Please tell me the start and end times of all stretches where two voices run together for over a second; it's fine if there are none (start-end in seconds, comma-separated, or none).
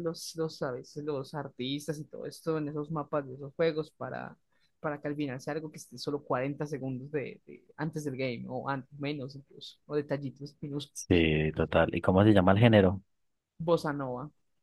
none